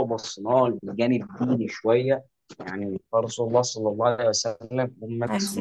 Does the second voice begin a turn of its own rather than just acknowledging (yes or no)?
no